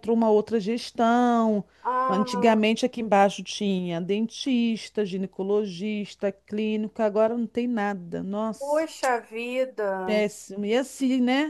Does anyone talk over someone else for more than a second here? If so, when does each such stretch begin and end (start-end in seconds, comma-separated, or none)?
none